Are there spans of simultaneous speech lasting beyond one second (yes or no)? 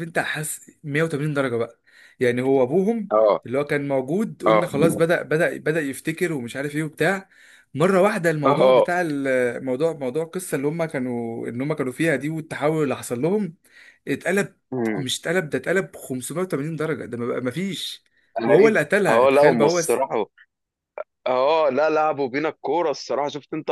yes